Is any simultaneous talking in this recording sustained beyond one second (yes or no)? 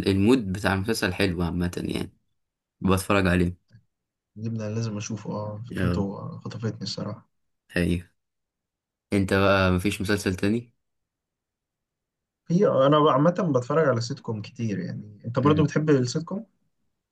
no